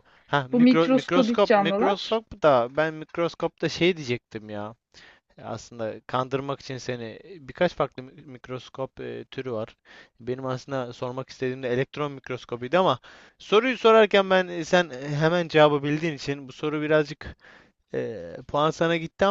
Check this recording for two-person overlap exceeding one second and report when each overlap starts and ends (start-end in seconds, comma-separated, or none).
0.5-2.2